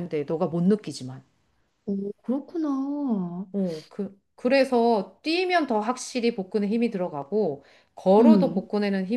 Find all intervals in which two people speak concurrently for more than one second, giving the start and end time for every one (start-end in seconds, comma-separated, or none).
none